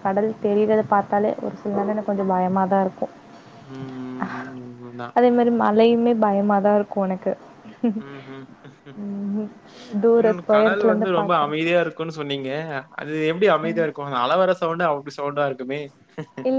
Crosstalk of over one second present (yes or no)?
yes